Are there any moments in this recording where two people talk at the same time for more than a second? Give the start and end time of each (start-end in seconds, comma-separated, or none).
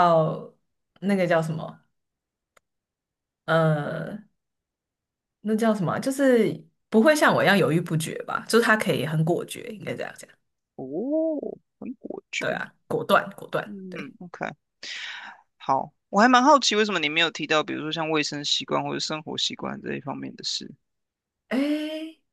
none